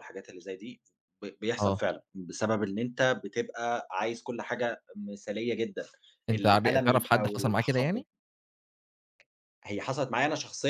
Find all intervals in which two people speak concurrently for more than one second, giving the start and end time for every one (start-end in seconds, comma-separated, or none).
6.3-8.0